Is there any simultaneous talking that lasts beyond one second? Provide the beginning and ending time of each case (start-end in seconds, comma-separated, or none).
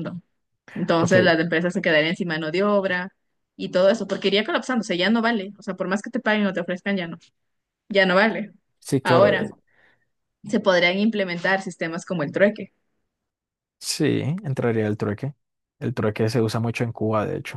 none